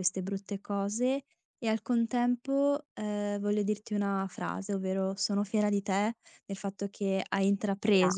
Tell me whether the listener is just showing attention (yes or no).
yes